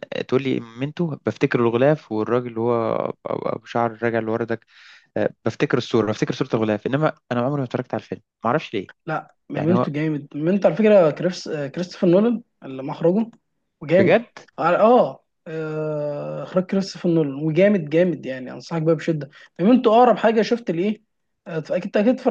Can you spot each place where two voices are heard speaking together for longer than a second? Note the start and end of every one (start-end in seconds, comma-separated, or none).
none